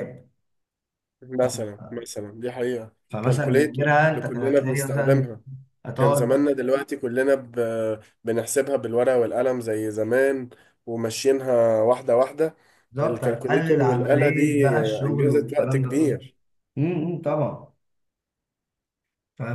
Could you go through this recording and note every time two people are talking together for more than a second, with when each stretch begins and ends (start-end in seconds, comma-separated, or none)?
3.1-5.3, 13.0-16.2